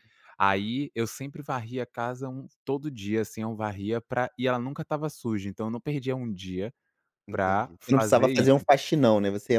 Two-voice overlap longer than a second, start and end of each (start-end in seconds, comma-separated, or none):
7.3-8.7